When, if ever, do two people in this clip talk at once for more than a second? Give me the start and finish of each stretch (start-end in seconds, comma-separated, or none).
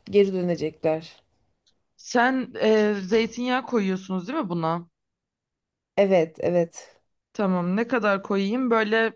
none